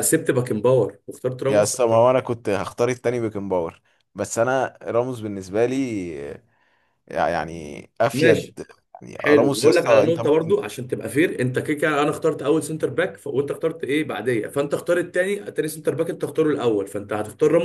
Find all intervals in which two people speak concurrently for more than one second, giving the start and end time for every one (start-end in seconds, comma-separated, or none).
9.2-10.6